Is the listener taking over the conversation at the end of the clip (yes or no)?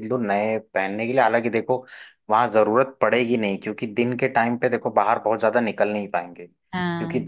no